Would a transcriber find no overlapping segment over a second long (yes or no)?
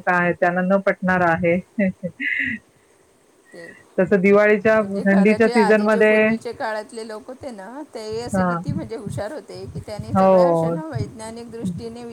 no